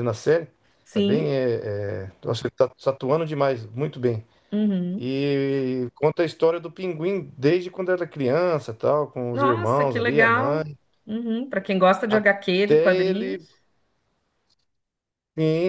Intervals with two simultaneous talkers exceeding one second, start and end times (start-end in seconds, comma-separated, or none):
9.3-10.8, 12.1-13.4